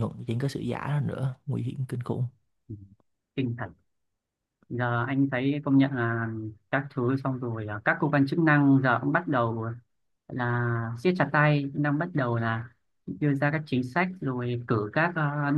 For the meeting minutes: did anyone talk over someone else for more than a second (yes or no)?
no